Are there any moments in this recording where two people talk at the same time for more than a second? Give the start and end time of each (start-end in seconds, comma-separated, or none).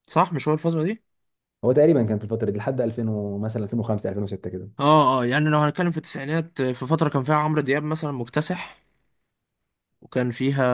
none